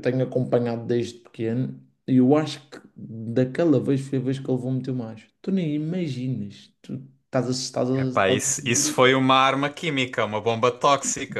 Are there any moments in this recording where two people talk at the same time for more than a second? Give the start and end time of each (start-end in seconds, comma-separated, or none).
8.0-9.2